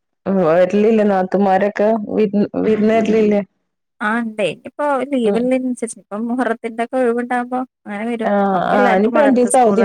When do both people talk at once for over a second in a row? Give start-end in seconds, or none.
none